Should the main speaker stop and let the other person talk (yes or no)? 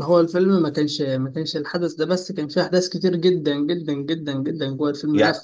no